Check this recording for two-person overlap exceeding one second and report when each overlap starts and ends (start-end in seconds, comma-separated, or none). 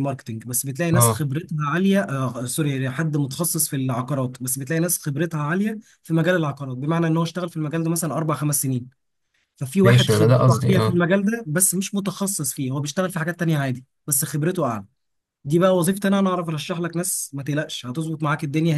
9.8-11.1